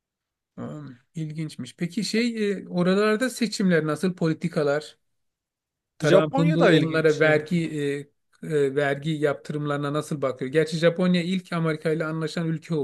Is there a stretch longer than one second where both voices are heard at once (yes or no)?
yes